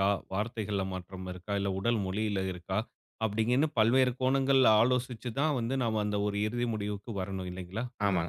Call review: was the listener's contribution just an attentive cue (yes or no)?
no